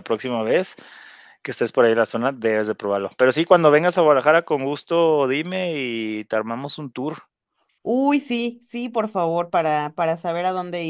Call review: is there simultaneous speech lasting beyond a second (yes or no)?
no